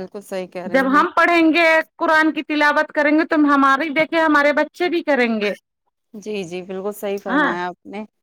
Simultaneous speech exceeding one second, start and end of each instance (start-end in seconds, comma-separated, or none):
none